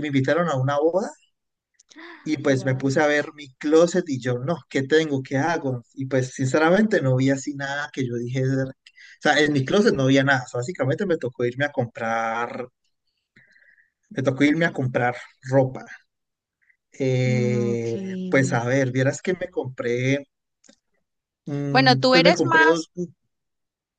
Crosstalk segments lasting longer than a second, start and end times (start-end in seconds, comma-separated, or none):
21.7-22.9